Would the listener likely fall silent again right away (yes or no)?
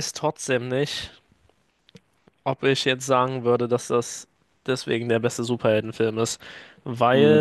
no